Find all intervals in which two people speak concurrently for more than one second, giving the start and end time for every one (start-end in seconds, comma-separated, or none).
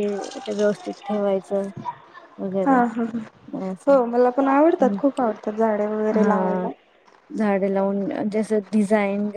none